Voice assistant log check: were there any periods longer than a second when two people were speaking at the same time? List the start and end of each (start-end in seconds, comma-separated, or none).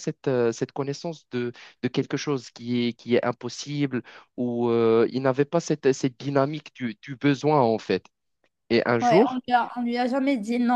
none